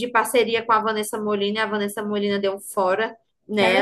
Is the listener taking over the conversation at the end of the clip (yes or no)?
no